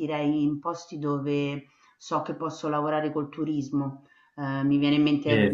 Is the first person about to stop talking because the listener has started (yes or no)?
no